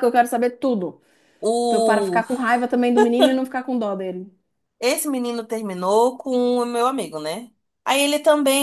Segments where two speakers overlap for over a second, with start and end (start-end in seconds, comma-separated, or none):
none